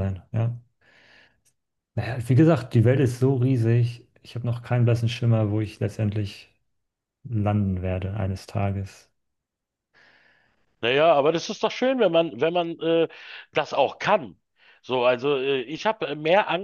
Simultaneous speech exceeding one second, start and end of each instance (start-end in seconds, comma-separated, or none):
none